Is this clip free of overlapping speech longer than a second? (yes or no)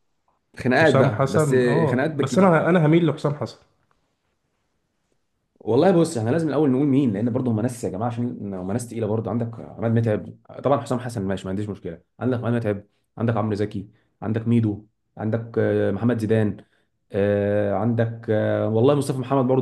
no